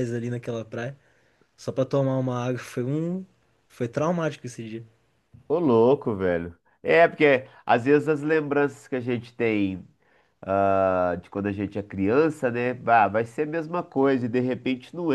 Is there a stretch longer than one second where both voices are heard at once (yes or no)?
no